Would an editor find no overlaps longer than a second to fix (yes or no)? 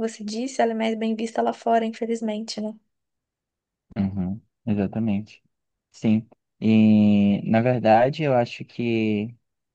yes